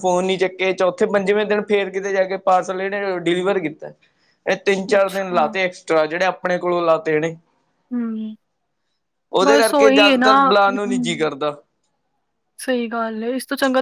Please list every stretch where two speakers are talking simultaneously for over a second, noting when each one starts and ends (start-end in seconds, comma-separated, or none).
9.6-11.0